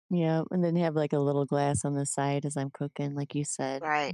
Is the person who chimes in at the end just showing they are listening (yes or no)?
no